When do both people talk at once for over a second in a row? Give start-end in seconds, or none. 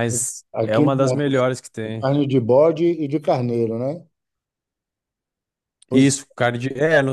0.5-2.1